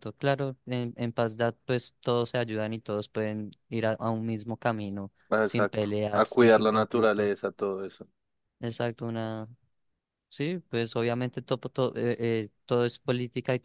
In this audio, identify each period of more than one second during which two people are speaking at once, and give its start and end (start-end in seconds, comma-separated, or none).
5.3-7.3